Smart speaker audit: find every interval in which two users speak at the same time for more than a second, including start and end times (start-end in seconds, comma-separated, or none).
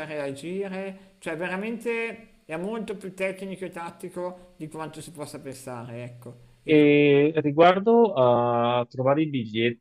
none